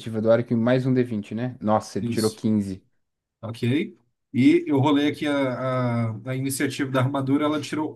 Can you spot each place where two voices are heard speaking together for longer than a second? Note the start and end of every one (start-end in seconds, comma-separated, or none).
none